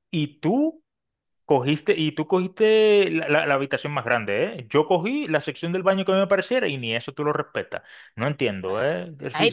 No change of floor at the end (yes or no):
no